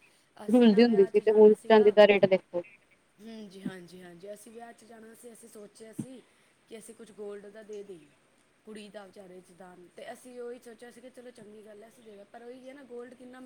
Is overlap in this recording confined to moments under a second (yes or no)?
no